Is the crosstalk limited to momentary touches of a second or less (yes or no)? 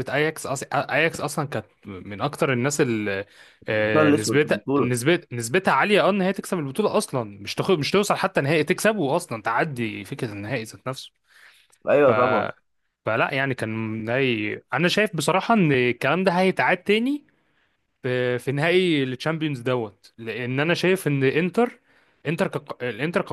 no